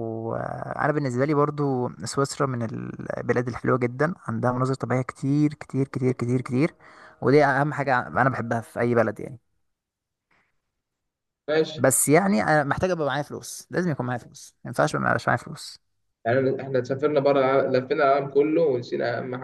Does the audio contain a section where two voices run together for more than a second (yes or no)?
no